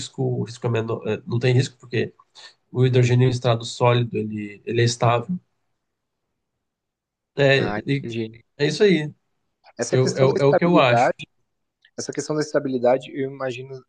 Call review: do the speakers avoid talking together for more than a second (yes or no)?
no